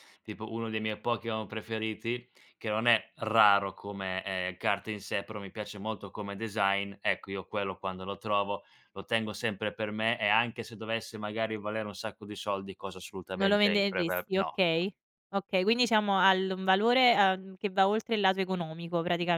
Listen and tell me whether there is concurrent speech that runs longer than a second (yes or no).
yes